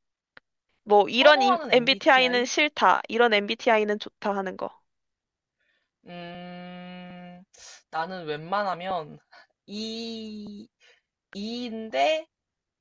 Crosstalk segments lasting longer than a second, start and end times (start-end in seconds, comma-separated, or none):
1.1-2.5